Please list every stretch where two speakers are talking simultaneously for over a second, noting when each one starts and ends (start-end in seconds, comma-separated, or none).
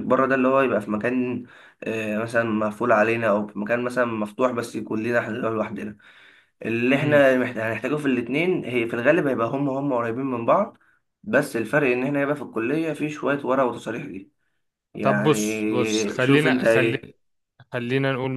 15.0-17.1